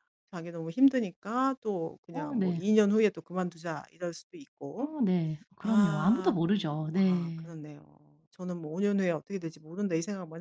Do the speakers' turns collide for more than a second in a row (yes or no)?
yes